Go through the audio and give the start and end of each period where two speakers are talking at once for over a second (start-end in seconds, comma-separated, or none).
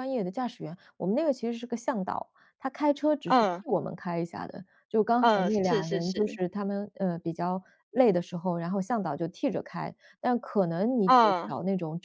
5.2-6.4